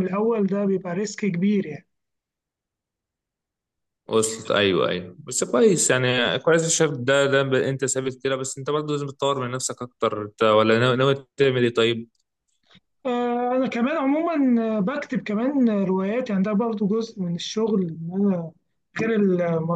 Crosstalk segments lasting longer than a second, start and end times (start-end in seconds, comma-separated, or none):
none